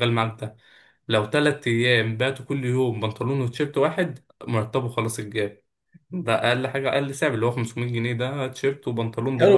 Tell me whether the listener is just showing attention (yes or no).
no